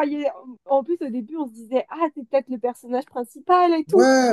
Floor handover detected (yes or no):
yes